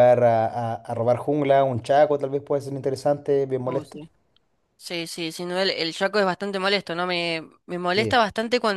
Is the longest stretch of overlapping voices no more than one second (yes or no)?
yes